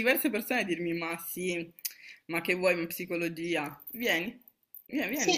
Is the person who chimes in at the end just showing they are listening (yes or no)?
no